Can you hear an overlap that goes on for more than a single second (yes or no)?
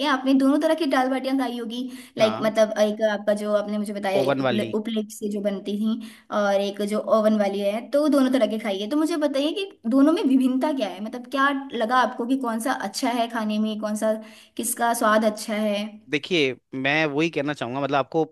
no